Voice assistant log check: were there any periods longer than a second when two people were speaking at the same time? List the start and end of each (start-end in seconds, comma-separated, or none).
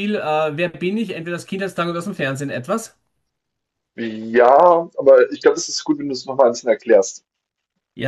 none